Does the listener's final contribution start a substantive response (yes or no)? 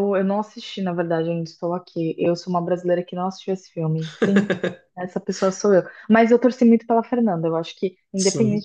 no